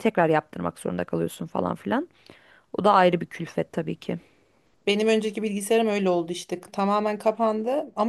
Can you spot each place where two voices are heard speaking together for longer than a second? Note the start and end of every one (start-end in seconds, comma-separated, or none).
none